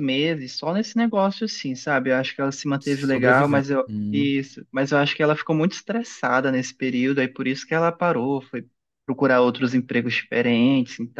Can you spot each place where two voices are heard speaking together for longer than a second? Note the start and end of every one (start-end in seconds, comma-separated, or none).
2.8-4.3